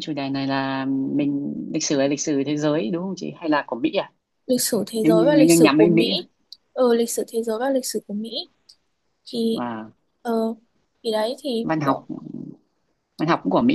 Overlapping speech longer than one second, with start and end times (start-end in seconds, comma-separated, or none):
5.0-6.2